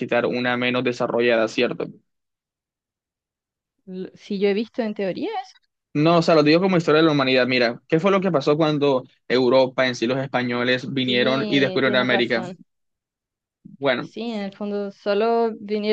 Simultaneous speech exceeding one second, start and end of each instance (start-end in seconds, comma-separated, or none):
11.0-12.4